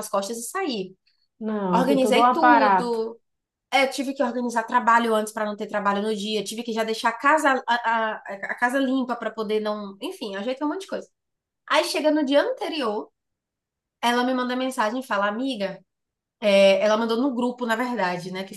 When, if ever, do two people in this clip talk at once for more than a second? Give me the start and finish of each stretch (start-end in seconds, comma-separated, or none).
1.7-3.0